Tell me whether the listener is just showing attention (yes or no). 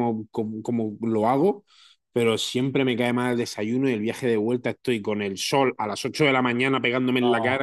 yes